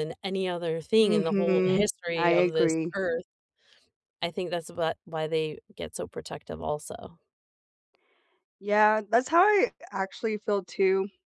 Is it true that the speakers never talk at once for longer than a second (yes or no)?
no